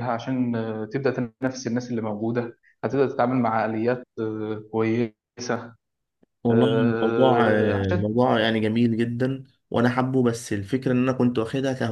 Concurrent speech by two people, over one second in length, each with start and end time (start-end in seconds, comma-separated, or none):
6.5-8.0